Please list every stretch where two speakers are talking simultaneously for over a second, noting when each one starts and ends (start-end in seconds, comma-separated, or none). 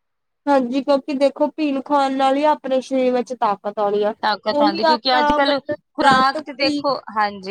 4.6-6.9